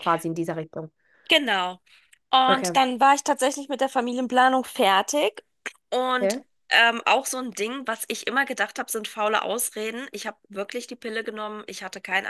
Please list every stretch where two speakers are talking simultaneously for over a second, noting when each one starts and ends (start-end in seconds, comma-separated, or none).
none